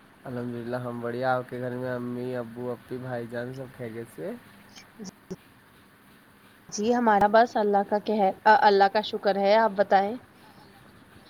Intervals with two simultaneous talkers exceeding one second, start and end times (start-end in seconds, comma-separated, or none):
none